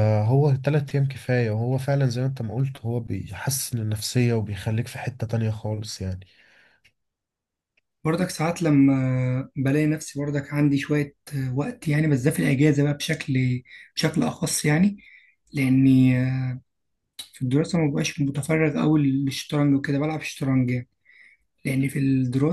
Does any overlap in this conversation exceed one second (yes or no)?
no